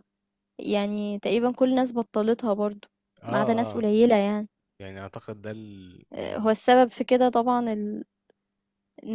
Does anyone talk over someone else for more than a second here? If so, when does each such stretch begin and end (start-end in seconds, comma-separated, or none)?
none